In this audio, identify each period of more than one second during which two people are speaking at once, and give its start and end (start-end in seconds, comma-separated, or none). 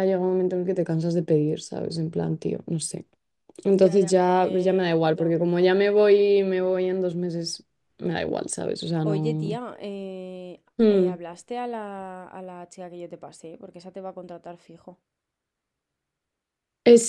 3.7-5.3